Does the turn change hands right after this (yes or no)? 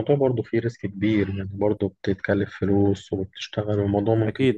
yes